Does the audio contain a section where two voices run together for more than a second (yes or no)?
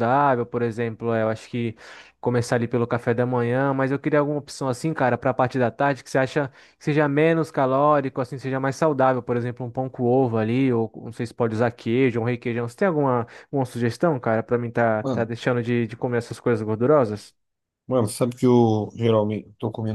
no